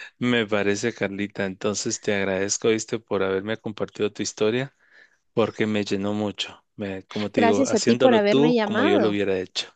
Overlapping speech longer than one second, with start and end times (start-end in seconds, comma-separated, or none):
7.3-9.2